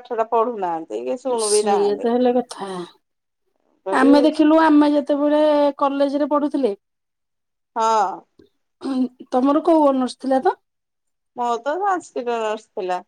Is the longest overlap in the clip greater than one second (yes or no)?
no